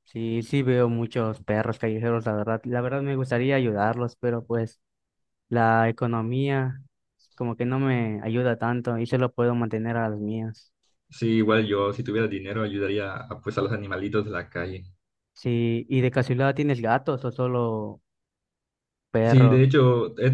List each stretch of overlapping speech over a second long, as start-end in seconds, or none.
none